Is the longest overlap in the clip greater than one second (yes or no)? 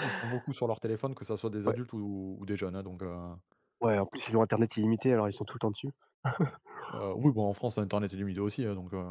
no